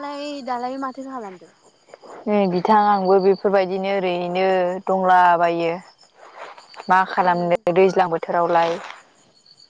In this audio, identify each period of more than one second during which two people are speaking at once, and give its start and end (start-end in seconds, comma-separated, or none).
none